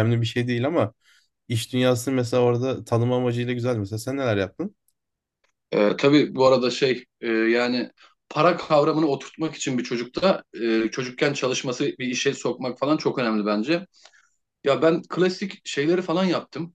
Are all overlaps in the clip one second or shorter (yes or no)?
yes